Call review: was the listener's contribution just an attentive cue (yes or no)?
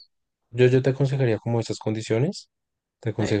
yes